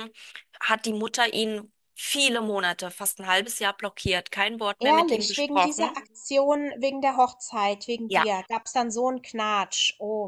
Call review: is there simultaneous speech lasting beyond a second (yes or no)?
yes